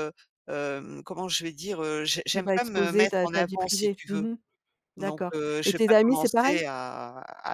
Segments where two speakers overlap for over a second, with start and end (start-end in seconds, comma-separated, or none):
2.3-4.3, 5.0-6.6